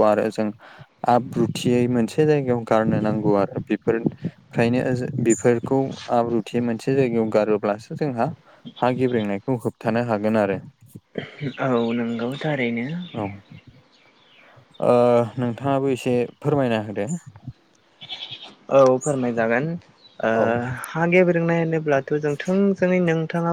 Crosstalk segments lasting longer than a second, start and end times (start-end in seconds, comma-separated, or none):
none